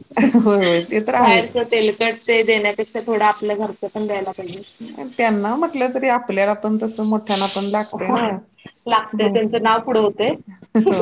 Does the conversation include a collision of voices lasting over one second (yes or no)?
no